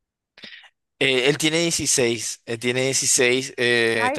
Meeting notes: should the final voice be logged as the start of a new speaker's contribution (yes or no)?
no